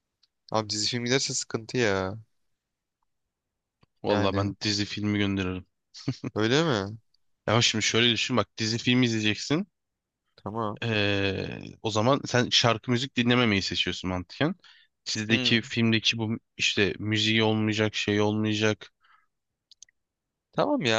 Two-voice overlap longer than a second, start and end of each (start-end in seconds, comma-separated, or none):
none